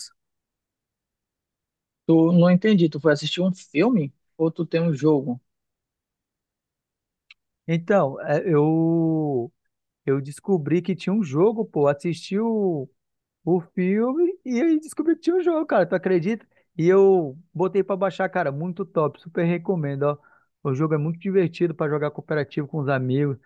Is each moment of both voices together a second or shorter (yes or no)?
yes